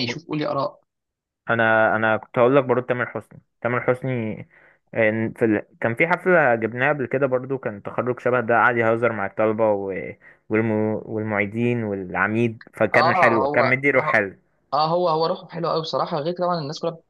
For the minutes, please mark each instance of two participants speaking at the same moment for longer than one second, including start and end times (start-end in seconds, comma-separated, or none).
12.9-14.3